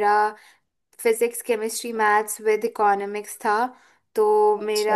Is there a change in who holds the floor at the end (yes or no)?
no